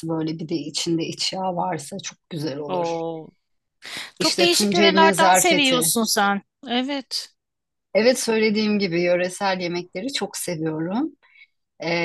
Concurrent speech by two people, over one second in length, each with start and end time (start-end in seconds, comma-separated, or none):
4.2-5.9